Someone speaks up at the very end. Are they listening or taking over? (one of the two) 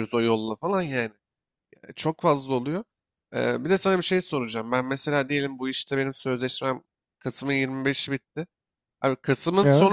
listening